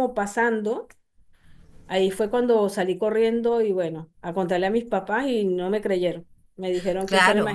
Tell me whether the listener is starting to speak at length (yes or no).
yes